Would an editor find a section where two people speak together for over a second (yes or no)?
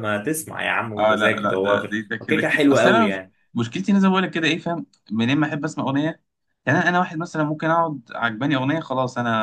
yes